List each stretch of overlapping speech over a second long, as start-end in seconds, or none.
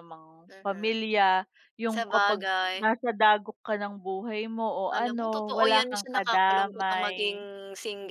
4.9-7.4